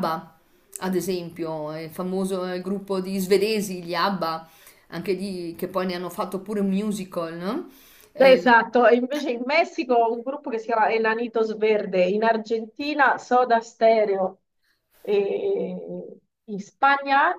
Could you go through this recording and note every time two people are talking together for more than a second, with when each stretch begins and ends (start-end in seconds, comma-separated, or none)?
none